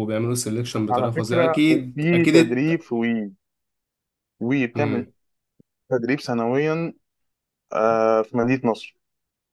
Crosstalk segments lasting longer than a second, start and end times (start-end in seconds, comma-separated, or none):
0.9-2.8